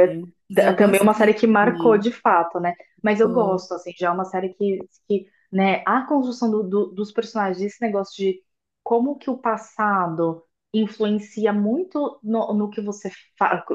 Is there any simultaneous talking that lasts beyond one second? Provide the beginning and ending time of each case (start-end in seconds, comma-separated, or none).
0.5-2.0